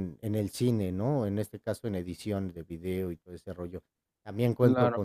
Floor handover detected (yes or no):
no